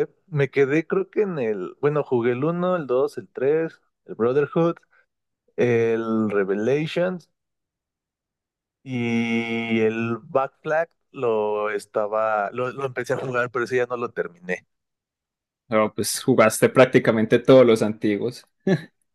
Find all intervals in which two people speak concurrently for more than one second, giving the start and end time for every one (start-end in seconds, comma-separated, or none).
none